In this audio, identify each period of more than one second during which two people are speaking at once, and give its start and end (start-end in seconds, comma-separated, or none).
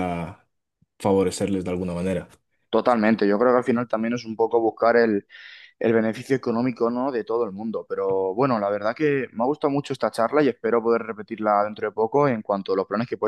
none